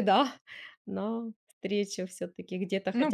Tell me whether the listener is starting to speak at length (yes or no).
yes